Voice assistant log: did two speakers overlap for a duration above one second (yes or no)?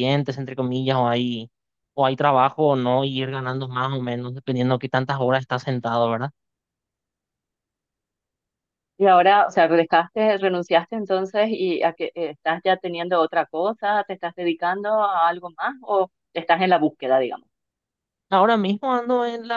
no